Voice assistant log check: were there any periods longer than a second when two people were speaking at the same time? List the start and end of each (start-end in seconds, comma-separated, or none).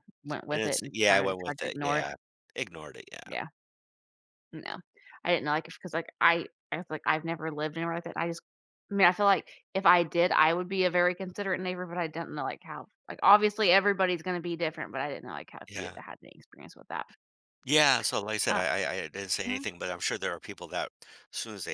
0.5-2.1